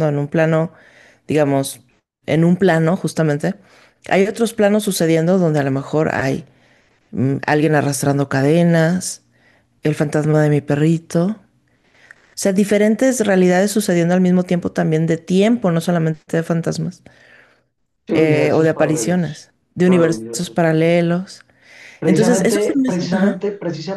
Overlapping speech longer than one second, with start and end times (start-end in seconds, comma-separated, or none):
18.1-20.6, 22.0-23.4